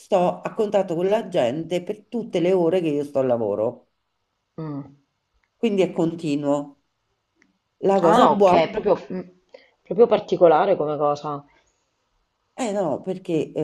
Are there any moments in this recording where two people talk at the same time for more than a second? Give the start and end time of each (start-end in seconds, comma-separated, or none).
none